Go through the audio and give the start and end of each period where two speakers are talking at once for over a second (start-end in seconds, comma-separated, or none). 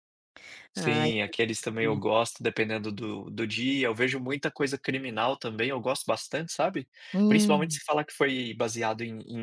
0.8-2.0